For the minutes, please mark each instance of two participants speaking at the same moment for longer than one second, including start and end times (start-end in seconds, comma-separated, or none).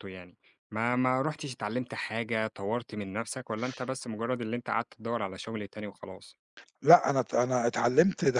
none